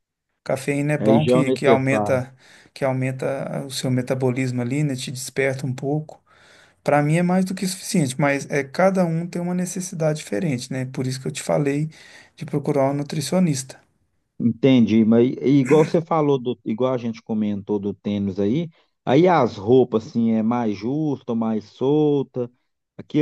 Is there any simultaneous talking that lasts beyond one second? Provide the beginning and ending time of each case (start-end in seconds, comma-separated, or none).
1.0-2.2